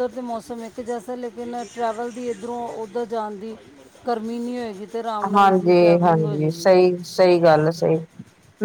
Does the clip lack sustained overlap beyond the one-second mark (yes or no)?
no